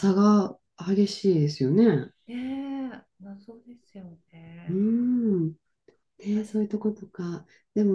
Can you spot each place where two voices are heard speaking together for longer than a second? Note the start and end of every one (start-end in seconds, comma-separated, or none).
none